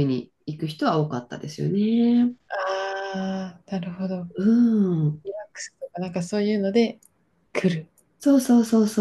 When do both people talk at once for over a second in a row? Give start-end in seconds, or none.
none